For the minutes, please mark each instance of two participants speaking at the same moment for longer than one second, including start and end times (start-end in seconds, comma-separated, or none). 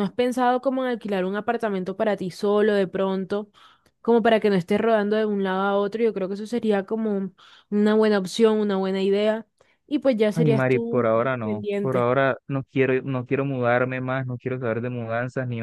10.3-12.1